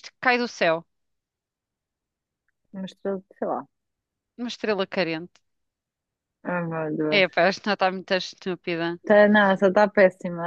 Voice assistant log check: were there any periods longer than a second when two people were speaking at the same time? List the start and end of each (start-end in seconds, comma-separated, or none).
none